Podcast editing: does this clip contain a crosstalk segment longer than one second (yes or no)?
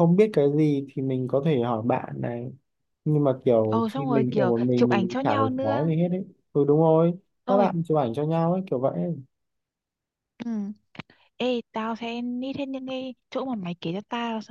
yes